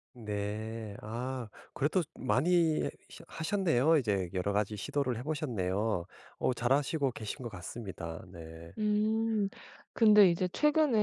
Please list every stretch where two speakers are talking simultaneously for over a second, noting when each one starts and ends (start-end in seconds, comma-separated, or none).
none